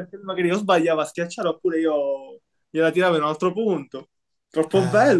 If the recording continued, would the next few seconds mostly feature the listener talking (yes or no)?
yes